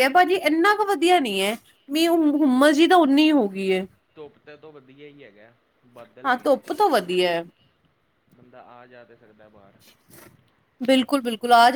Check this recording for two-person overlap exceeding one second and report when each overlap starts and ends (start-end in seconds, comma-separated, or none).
none